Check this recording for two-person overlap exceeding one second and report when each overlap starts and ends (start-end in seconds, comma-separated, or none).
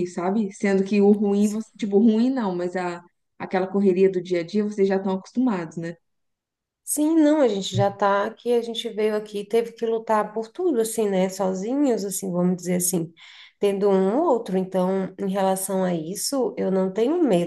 none